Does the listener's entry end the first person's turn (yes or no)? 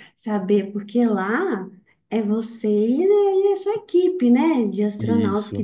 no